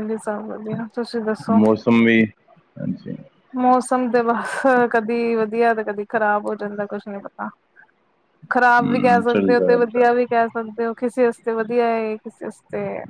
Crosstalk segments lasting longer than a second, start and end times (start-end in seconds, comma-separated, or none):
8.6-10.1